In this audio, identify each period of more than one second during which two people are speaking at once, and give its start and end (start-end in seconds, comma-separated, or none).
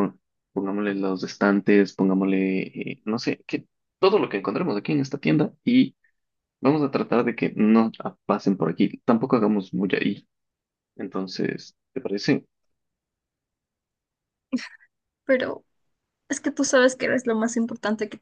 none